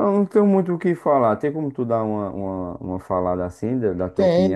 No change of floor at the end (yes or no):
no